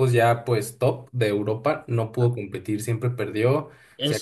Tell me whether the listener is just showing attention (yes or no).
yes